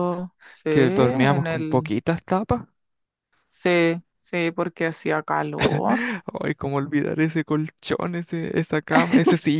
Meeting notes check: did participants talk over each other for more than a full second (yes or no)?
yes